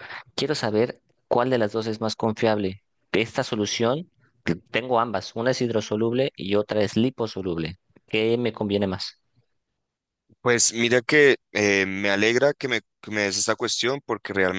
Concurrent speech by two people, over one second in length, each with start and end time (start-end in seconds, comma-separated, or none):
none